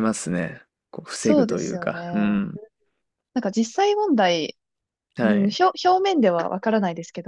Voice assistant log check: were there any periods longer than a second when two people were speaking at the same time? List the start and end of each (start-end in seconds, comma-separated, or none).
1.1-2.4